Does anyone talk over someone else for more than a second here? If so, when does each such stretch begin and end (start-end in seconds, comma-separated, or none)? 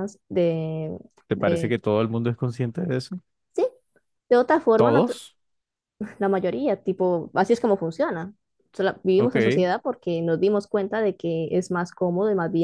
none